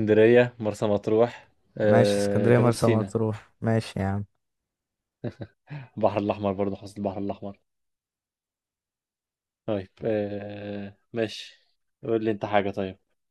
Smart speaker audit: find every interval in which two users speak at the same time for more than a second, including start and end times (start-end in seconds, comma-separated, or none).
1.8-3.2